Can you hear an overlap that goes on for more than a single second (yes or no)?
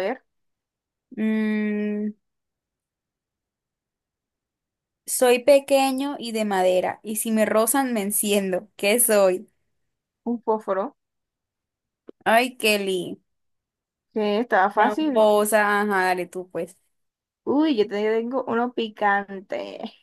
no